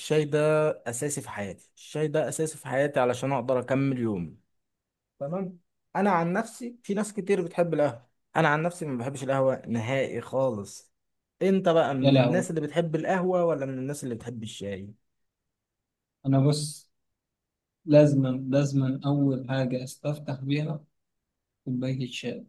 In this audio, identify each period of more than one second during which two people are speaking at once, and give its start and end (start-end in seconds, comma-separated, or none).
none